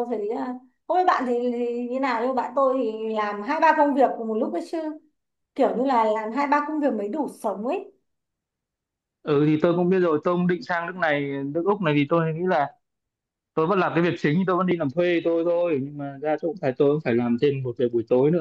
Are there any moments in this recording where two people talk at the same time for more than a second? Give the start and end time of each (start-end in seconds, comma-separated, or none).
none